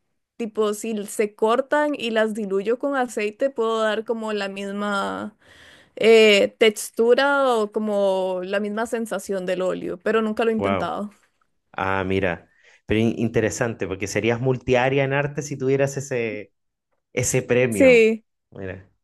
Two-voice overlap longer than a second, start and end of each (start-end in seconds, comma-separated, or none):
none